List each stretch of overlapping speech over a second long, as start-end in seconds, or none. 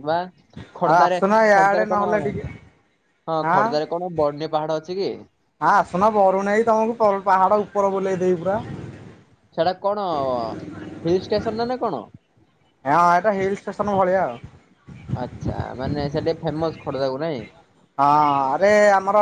3.5-5.1